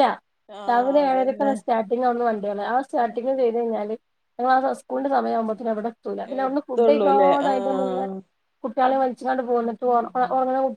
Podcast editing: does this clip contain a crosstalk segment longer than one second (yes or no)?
yes